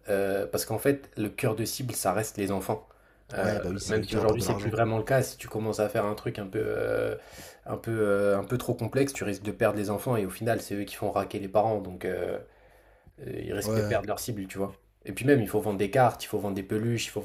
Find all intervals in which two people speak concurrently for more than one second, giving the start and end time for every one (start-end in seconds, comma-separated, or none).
3.4-4.7